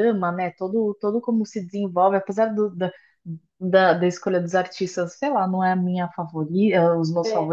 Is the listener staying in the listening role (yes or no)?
yes